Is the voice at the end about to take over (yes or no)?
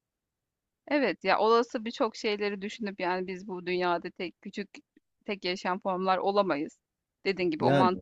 no